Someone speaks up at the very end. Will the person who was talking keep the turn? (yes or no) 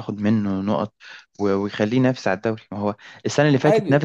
yes